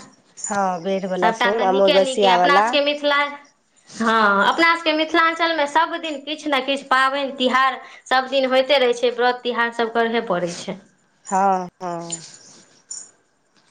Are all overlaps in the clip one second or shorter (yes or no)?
no